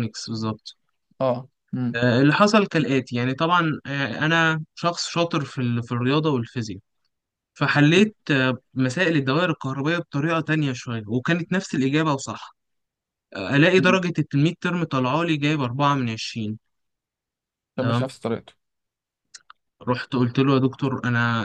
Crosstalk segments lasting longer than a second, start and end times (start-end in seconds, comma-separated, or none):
none